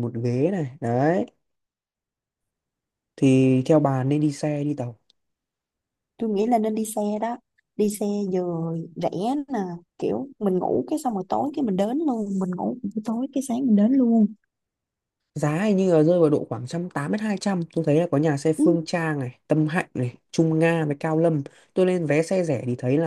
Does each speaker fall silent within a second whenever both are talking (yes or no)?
yes